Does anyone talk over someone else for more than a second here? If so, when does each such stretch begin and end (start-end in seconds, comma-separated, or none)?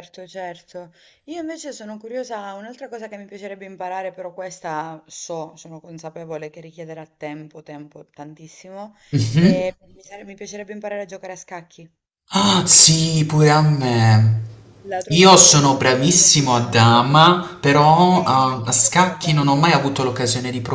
15.1-17.2, 18.1-19.6